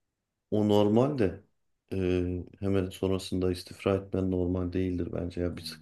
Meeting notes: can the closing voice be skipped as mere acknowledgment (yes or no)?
yes